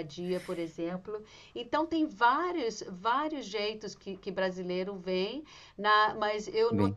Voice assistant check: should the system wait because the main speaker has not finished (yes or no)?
yes